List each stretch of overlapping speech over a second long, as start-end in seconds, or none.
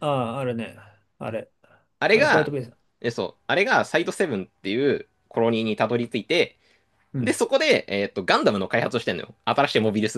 none